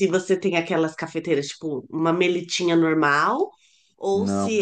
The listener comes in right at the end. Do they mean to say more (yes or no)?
no